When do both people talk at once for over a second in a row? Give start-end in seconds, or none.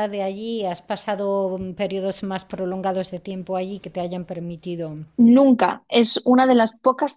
none